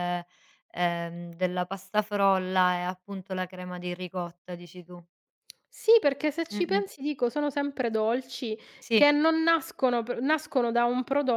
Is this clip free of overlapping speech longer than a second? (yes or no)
yes